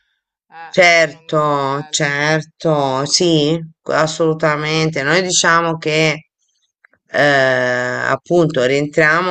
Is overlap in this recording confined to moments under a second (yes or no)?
no